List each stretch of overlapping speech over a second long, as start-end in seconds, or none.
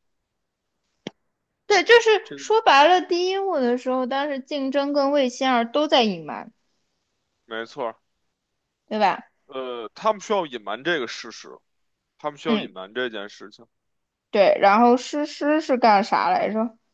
none